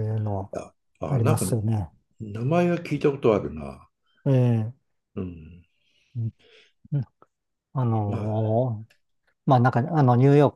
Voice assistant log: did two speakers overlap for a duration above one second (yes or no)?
no